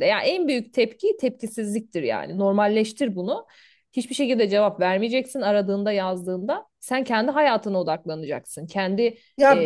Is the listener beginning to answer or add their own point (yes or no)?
yes